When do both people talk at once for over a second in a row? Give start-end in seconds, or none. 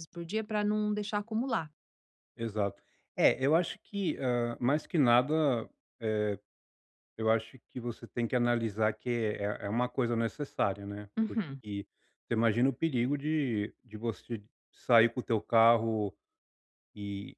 none